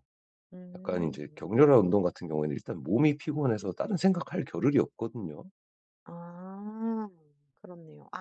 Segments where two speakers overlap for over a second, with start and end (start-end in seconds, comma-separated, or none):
none